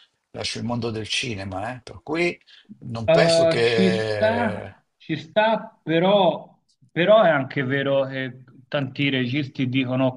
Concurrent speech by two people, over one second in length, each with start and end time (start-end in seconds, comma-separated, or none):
3.1-4.8